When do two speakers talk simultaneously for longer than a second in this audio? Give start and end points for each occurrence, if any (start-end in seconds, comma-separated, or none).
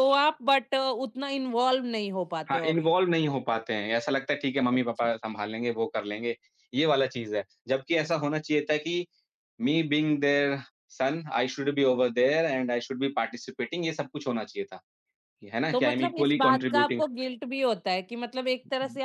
15.7-17.0